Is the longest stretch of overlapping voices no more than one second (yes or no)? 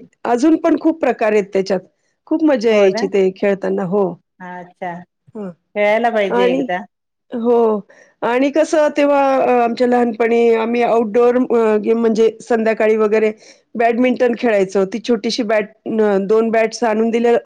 yes